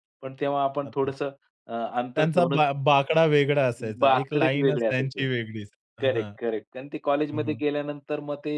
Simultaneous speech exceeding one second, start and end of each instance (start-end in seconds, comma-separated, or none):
4.0-5.2